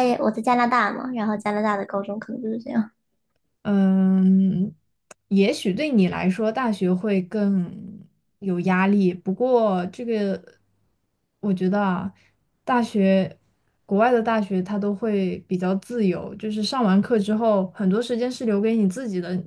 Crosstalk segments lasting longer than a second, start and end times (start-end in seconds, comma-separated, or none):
none